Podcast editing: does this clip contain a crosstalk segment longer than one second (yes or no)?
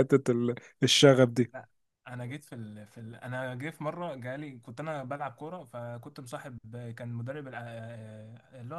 no